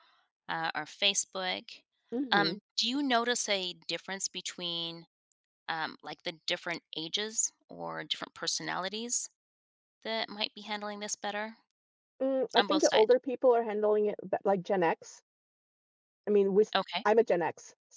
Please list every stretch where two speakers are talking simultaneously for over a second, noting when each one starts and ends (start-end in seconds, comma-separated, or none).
none